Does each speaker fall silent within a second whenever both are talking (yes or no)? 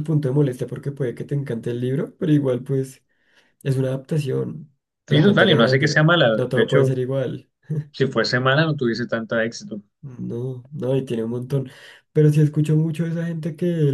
no